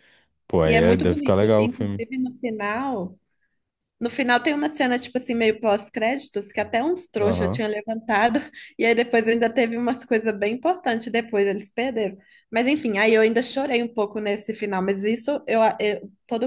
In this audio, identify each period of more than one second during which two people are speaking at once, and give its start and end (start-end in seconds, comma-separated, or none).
0.7-2.0